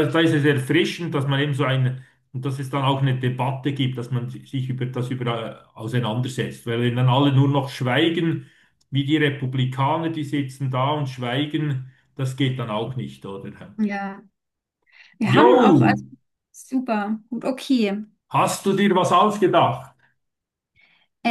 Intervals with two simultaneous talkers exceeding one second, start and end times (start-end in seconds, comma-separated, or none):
none